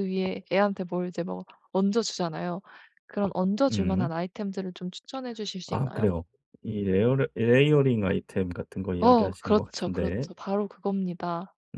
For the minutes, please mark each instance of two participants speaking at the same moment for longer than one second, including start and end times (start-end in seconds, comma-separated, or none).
9.0-10.3